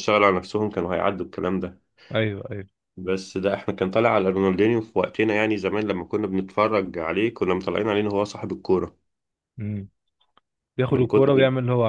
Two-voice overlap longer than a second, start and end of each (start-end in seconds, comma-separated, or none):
none